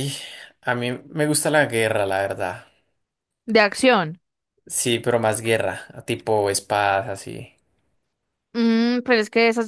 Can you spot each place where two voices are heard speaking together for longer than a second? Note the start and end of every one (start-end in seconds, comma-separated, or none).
none